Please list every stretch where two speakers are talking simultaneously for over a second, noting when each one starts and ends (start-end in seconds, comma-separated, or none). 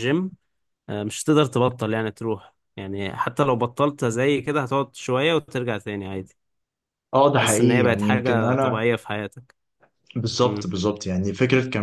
7.3-8.8